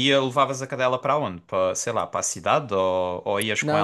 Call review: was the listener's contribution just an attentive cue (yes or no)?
no